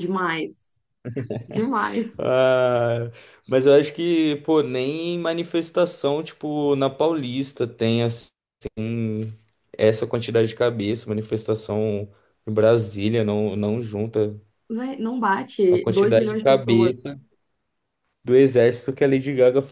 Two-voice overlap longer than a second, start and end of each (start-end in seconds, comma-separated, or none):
15.7-17.1